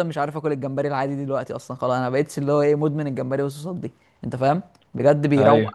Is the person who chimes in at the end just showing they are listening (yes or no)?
yes